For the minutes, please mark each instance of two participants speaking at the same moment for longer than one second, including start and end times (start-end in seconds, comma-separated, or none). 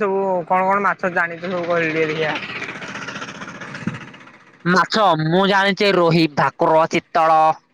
none